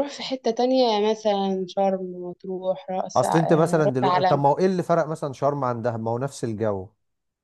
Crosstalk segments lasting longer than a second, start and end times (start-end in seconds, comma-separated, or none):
3.1-4.4